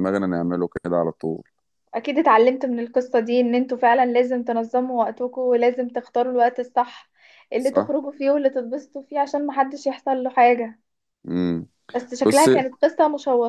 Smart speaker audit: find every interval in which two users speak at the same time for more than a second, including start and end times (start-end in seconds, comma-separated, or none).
none